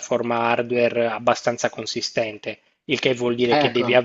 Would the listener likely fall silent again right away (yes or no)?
yes